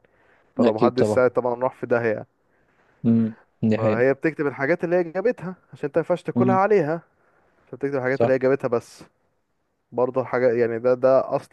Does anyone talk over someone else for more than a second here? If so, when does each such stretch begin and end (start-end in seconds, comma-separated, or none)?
none